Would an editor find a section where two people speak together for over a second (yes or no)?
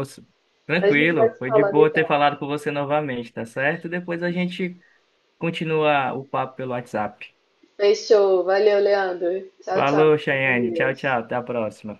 yes